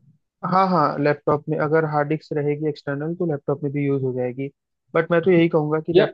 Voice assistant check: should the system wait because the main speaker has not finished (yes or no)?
yes